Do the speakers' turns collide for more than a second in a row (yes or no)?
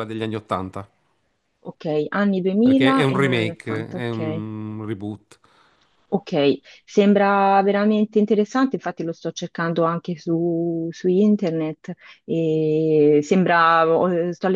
yes